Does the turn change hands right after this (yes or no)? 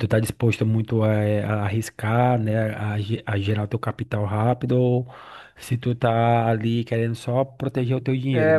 yes